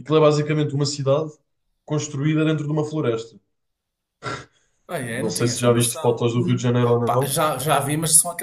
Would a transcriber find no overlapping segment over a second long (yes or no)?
no